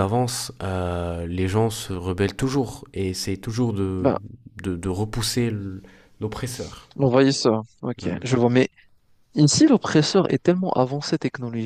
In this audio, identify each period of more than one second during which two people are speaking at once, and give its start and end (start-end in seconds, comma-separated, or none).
none